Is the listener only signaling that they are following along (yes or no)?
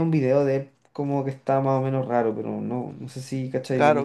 no